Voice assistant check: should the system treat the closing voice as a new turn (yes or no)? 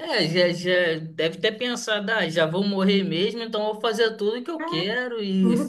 yes